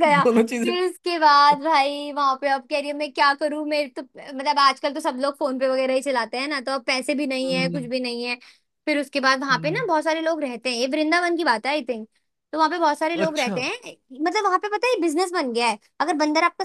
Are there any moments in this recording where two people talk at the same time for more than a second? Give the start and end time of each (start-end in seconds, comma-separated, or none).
none